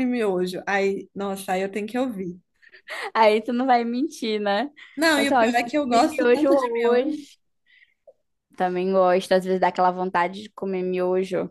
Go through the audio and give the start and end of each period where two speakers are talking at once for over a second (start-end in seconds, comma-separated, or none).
5.1-7.2